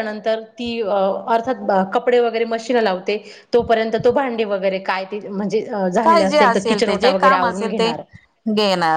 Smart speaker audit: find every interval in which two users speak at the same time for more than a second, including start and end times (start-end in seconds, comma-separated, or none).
6.0-7.9